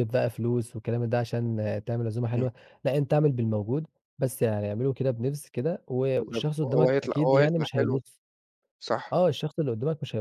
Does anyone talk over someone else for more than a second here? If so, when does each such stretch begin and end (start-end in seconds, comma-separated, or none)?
6.2-8.0